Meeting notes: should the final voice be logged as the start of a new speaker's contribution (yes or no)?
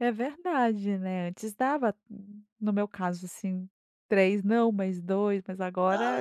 yes